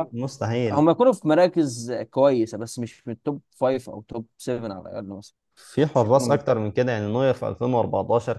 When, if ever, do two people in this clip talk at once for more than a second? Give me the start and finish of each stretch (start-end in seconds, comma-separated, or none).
none